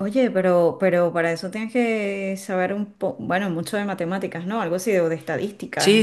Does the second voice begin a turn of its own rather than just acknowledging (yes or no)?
yes